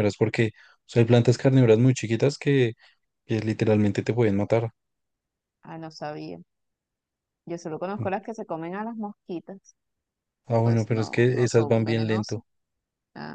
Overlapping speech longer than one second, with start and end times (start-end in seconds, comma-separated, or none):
10.5-12.4